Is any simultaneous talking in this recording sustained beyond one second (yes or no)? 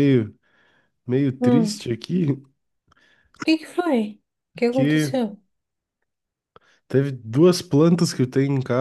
no